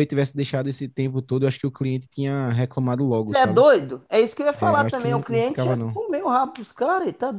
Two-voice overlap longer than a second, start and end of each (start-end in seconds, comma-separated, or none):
4.6-6.0